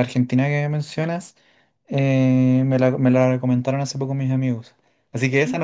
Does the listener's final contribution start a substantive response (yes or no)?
no